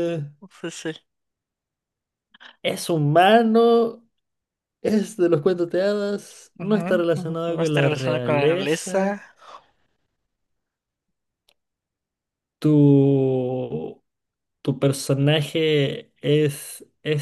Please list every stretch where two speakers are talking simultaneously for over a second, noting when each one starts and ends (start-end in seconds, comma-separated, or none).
6.6-9.2